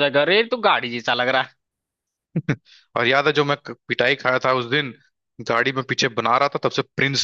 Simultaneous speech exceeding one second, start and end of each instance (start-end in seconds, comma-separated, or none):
none